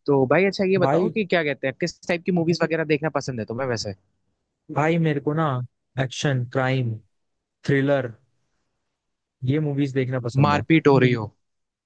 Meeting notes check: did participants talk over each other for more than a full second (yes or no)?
no